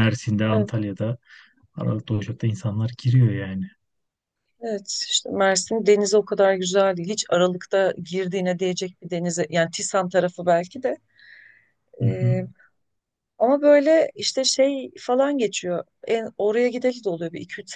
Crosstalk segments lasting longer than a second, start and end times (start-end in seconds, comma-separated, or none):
none